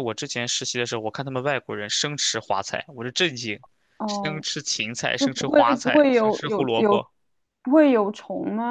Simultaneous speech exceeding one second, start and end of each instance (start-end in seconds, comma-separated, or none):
5.1-7.0